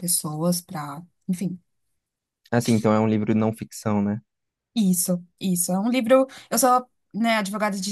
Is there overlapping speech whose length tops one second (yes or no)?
no